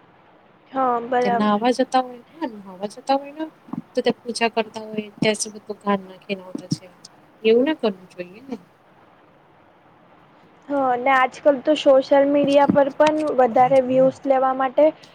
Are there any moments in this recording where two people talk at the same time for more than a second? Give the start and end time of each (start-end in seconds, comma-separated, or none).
none